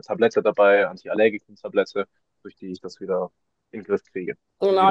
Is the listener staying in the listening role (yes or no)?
no